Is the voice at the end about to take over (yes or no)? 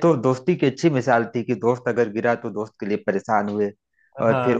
no